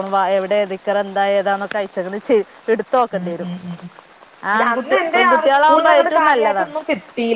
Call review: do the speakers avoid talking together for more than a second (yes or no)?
no